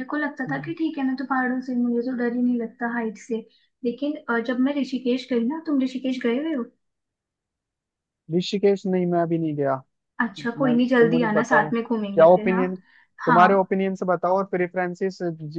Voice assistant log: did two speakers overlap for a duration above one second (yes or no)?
yes